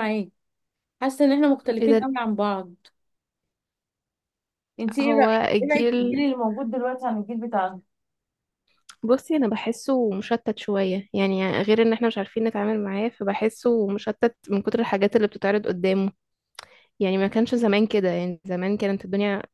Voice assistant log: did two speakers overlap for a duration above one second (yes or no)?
yes